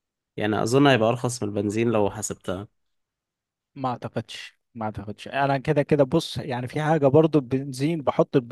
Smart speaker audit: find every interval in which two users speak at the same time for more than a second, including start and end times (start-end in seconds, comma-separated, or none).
none